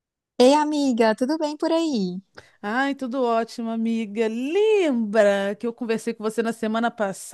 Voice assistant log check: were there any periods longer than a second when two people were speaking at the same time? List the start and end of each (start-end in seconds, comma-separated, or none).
none